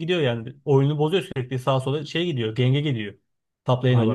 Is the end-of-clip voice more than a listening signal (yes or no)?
yes